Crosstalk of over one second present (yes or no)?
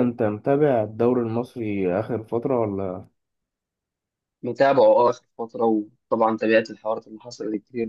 no